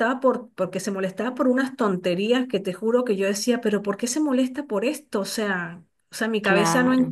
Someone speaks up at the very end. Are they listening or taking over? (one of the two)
listening